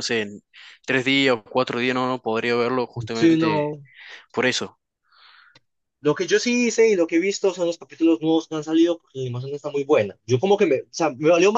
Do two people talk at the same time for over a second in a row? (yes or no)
no